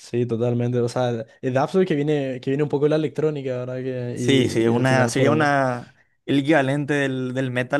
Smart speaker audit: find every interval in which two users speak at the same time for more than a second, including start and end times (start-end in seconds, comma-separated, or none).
4.1-5.6